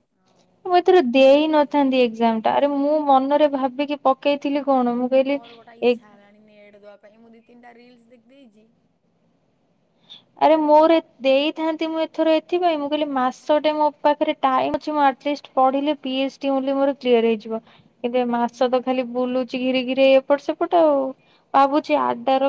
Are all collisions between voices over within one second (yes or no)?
no